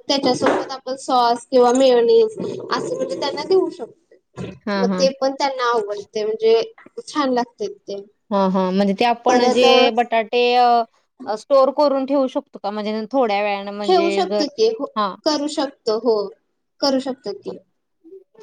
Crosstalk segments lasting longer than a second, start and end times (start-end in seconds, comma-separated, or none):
none